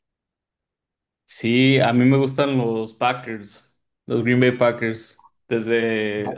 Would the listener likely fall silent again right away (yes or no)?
yes